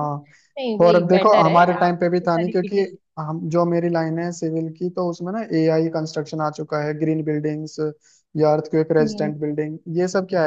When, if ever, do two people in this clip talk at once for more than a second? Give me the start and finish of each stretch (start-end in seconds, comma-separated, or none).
0.8-2.8